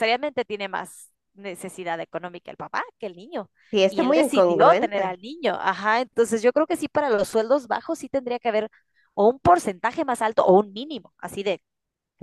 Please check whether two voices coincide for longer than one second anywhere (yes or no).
yes